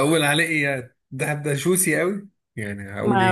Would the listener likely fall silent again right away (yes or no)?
no